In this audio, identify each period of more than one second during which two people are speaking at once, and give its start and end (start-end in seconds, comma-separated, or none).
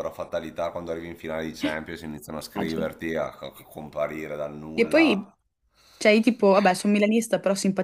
none